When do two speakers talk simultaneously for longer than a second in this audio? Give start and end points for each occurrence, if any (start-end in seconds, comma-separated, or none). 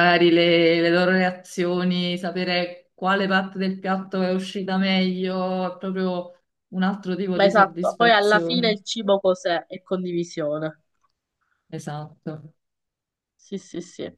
7.3-8.8